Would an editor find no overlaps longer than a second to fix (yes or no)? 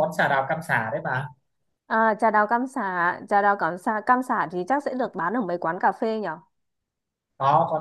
yes